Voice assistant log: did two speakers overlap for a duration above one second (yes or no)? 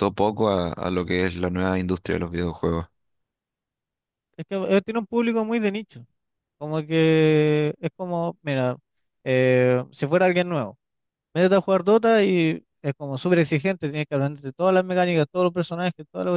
no